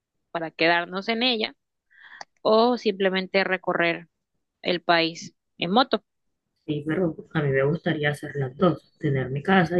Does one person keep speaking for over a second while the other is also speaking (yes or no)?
no